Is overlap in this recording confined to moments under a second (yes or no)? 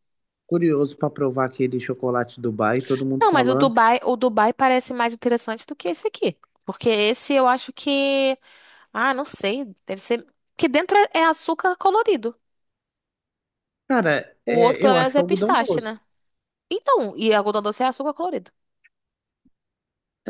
no